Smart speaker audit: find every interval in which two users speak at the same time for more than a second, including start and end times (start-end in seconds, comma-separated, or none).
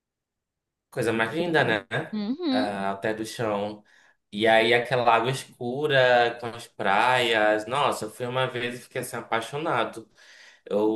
none